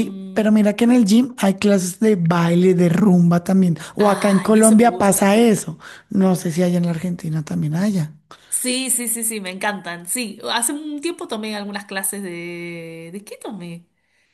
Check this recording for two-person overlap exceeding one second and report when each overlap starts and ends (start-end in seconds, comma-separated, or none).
4.0-5.4